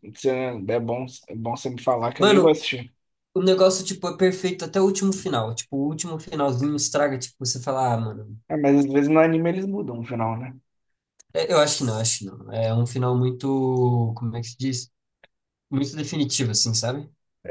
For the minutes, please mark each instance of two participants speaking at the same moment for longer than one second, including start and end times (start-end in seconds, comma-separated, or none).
none